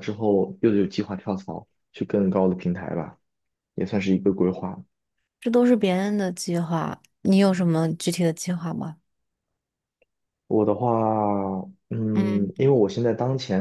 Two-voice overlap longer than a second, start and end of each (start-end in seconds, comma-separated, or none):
none